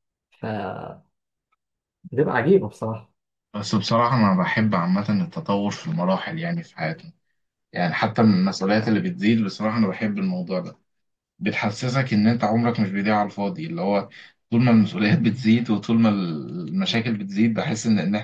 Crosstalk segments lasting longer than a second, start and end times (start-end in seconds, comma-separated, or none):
none